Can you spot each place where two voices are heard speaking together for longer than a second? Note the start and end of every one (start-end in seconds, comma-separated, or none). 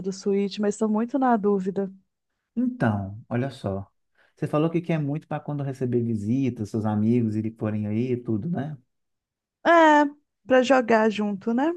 none